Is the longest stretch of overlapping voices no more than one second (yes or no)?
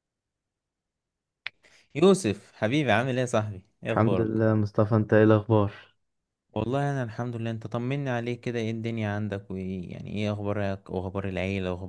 yes